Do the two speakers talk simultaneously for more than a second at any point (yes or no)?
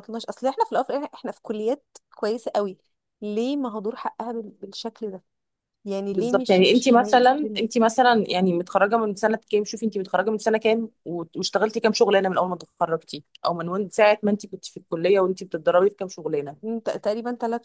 yes